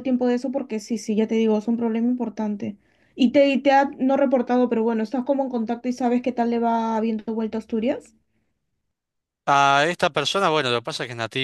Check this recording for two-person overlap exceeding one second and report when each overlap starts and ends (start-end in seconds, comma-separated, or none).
none